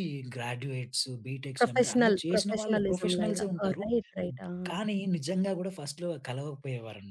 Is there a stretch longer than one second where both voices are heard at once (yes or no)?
yes